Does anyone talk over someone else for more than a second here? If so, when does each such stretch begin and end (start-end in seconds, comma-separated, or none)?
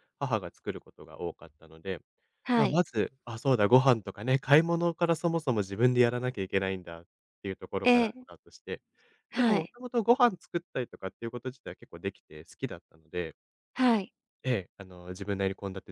none